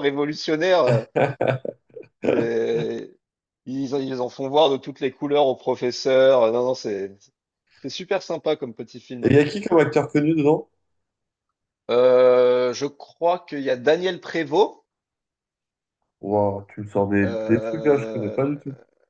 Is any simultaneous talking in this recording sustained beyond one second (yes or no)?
yes